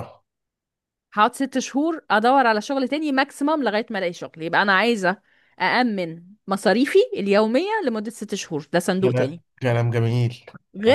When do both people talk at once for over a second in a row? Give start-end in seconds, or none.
none